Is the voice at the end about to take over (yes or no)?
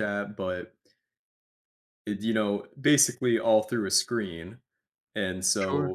no